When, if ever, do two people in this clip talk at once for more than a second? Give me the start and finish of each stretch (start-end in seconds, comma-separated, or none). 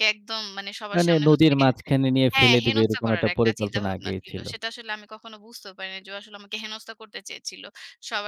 2.3-4.4